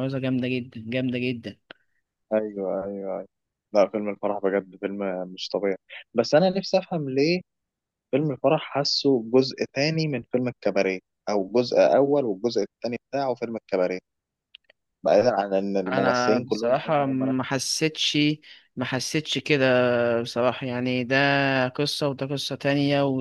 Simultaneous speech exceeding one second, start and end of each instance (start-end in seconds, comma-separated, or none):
15.9-17.3